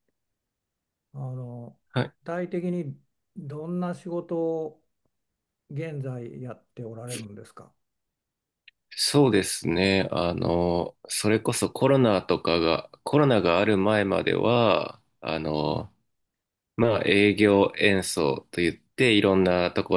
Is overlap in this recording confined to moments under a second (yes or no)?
yes